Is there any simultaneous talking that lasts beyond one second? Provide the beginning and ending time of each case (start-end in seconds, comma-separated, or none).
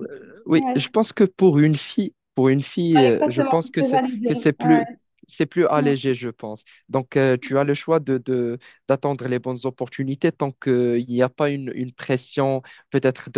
3.0-4.8